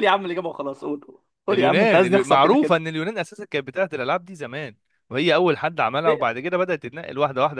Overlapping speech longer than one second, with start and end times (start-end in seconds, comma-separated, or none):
1.5-2.8